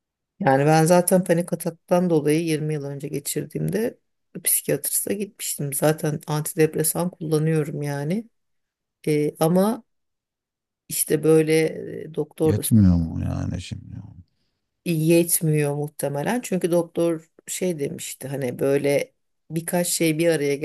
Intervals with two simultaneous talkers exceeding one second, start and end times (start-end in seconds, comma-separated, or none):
none